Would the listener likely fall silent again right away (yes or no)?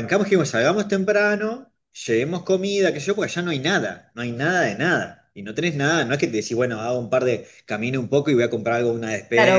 no